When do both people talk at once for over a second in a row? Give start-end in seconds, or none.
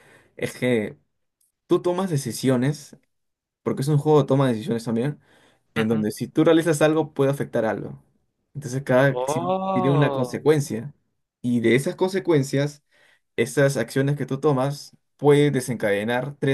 9.1-10.5